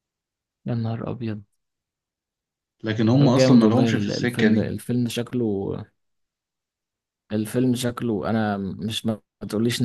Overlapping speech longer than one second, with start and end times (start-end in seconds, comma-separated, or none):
3.2-4.7